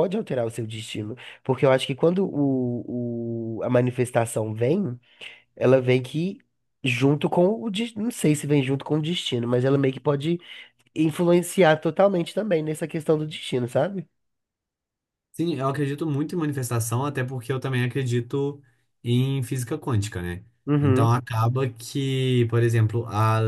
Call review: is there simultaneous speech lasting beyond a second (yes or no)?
no